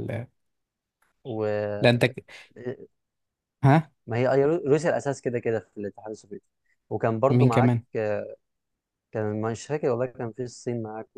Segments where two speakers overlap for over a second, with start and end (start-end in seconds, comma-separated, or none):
none